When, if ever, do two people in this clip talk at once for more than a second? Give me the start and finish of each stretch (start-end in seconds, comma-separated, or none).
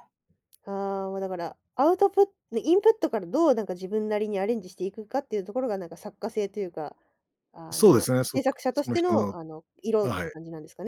7.7-9.3